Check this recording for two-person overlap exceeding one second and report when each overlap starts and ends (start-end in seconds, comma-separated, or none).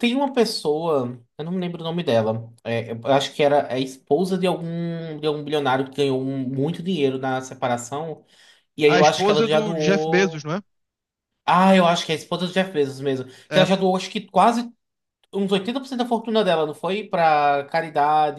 8.9-10.5